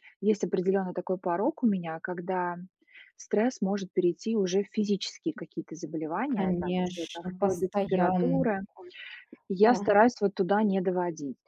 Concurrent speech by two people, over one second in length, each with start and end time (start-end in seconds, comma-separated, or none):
6.3-8.5